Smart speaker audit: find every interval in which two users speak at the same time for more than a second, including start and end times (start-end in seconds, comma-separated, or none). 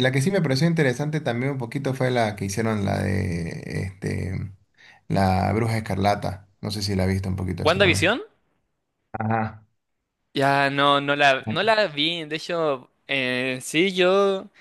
none